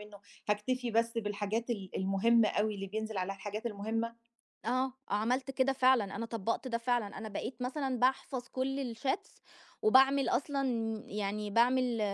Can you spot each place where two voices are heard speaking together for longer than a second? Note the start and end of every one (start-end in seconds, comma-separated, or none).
none